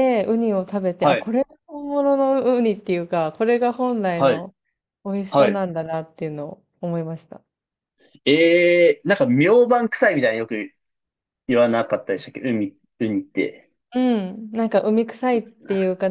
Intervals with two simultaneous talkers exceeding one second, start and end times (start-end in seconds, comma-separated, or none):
none